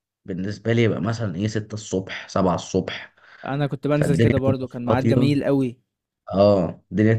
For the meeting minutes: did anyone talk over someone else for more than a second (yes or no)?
yes